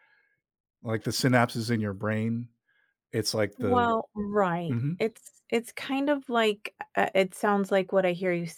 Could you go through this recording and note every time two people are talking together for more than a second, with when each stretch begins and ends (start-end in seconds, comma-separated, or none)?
none